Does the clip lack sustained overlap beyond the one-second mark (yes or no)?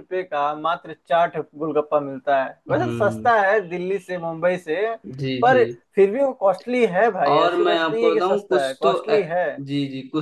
no